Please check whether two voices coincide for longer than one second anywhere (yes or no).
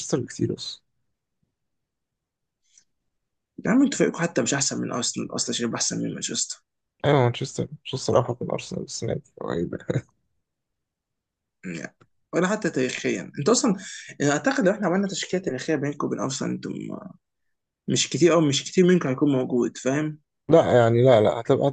no